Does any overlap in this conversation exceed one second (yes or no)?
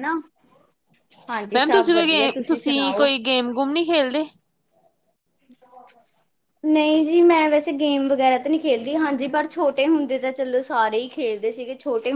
yes